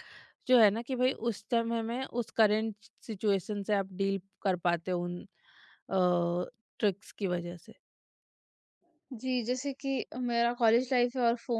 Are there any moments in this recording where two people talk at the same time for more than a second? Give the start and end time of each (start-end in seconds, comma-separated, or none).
none